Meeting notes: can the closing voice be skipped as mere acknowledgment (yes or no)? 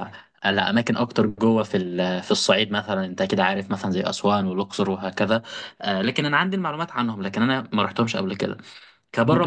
yes